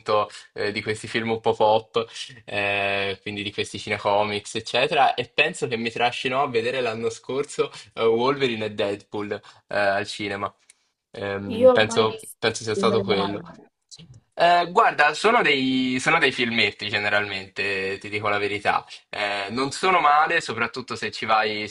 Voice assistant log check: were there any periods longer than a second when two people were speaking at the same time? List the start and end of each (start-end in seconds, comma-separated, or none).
11.6-13.4